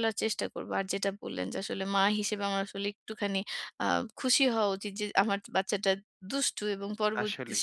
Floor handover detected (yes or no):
no